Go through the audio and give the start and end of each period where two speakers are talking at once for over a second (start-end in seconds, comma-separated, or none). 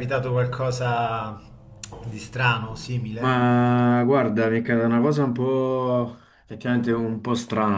none